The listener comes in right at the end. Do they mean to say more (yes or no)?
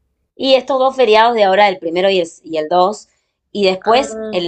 no